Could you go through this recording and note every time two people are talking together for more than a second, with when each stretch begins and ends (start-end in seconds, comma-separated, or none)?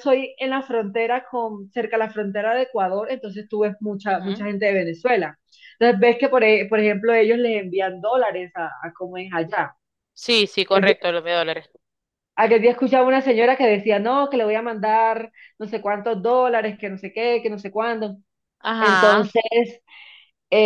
none